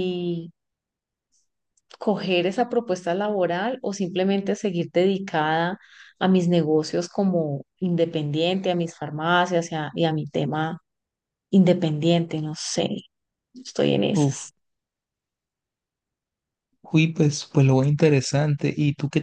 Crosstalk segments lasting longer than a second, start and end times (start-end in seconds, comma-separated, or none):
none